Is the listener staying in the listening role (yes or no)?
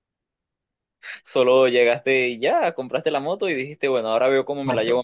no